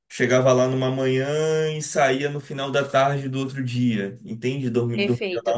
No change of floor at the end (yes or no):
no